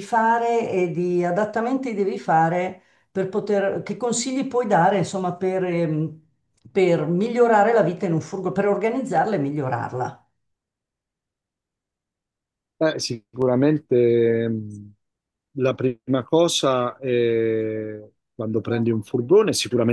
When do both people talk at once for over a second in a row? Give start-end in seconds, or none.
none